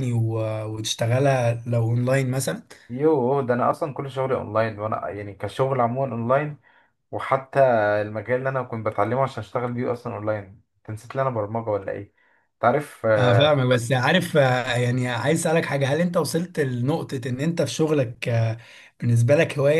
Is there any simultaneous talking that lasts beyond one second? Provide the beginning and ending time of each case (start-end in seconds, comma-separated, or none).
none